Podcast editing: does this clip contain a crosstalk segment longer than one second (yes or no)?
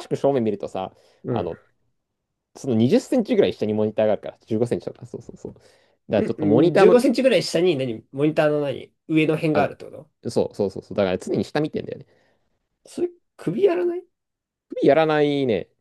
no